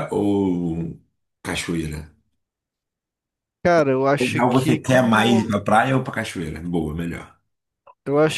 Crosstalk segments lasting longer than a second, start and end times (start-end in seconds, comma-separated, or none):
4.2-5.6